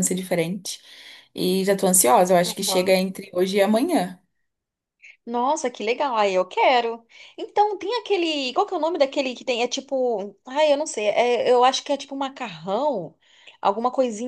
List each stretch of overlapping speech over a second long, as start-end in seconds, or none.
none